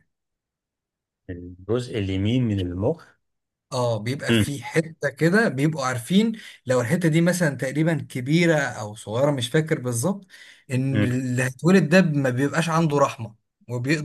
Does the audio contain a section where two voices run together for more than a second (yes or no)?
no